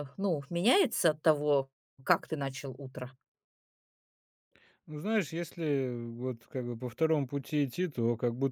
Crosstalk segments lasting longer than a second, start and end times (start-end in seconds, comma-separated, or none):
none